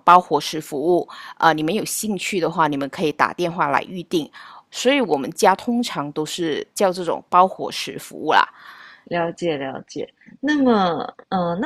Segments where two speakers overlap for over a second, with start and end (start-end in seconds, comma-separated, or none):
none